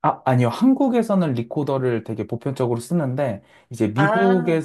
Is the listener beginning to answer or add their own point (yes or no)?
no